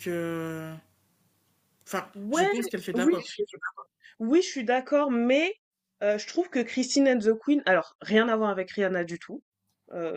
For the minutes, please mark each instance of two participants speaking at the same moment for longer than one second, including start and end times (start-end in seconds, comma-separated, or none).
none